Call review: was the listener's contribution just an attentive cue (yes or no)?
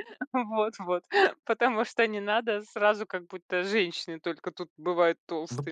no